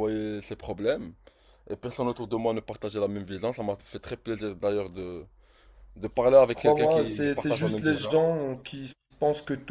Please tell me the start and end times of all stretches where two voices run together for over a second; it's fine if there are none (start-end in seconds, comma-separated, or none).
6.5-8.2